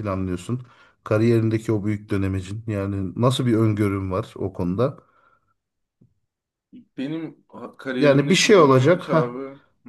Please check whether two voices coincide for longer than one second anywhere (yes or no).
yes